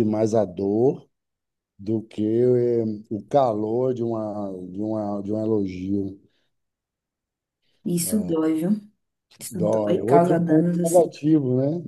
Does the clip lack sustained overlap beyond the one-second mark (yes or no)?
no